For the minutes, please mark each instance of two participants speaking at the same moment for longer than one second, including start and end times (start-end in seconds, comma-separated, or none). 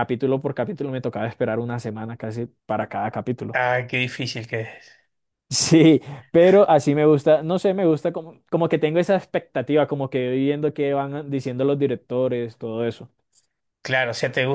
none